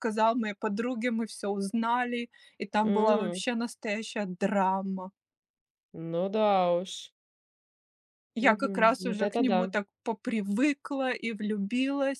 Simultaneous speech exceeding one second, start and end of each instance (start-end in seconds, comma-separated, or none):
8.4-9.7